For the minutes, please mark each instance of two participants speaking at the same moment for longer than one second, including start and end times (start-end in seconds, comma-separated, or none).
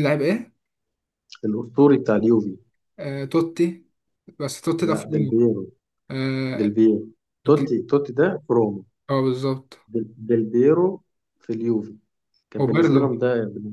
none